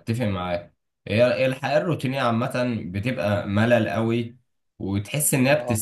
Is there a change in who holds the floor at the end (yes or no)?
no